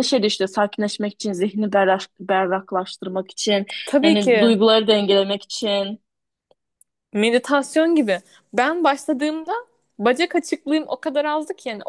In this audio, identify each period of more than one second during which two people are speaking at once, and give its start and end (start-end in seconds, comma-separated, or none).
none